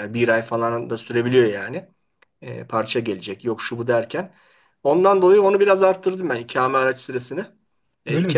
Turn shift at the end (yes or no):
yes